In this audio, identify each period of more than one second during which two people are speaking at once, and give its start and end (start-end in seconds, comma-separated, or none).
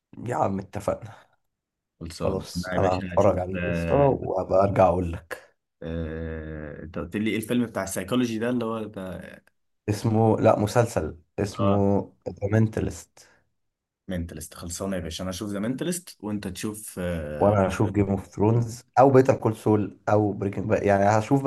2.2-4.2